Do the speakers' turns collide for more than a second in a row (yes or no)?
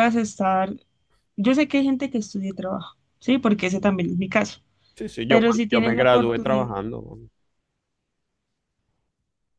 yes